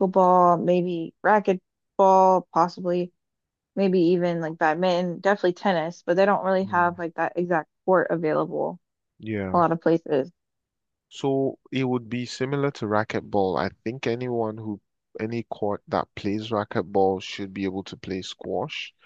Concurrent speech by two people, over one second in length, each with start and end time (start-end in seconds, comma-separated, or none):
none